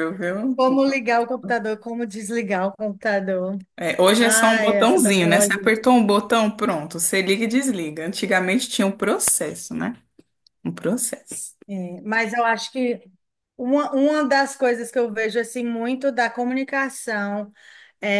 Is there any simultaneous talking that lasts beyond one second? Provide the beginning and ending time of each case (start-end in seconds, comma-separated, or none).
4.2-5.7